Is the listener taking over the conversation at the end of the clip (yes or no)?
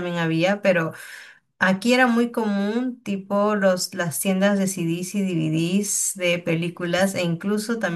no